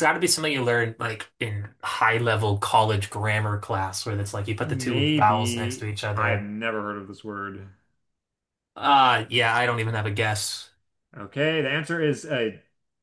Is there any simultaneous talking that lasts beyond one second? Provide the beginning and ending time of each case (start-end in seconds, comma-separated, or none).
4.6-6.5